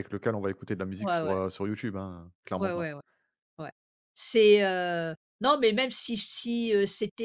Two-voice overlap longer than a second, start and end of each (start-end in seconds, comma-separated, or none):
none